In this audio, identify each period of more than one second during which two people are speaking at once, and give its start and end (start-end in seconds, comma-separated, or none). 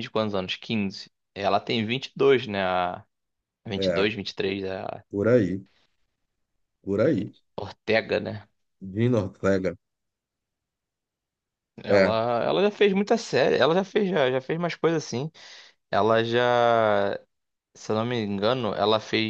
none